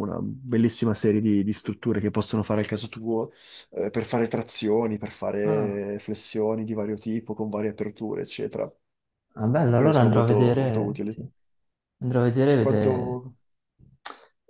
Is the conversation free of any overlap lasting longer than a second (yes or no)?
no